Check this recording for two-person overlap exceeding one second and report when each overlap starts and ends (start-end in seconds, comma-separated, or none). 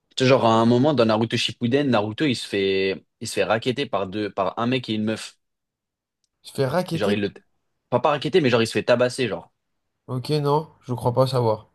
none